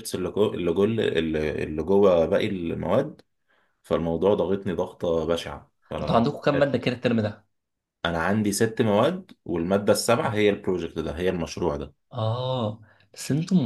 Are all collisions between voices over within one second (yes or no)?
yes